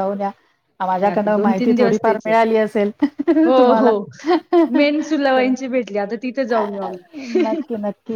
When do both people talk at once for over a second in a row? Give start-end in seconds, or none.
1.0-2.3